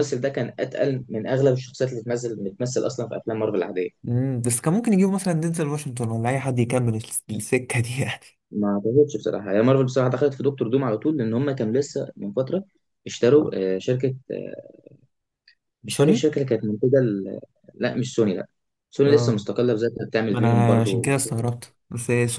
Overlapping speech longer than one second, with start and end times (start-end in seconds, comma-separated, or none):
20.3-21.5